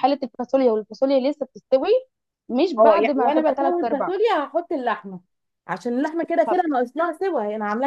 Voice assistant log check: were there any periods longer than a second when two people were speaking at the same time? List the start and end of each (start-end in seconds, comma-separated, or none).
2.8-4.1